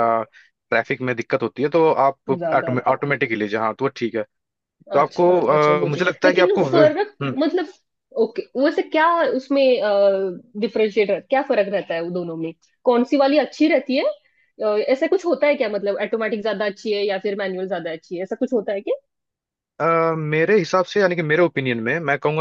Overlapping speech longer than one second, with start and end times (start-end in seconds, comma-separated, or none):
4.9-7.3